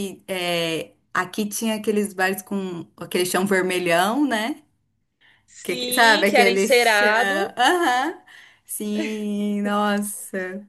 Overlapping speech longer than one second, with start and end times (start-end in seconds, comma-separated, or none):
5.6-7.1